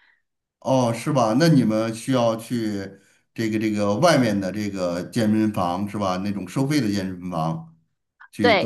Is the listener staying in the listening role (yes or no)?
no